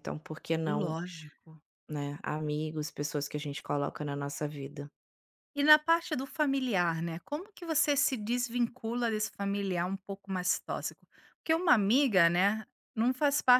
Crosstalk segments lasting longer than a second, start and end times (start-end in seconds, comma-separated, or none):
none